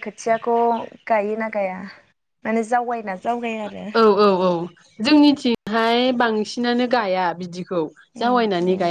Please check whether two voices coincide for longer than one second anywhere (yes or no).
no